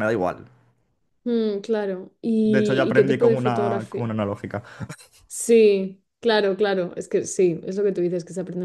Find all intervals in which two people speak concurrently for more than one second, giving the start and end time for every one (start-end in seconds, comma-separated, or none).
2.4-4.0